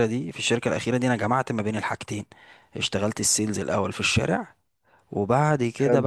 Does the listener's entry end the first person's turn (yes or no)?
no